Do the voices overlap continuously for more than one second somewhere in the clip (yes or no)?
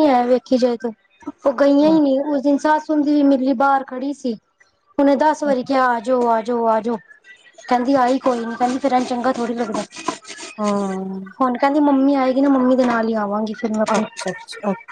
no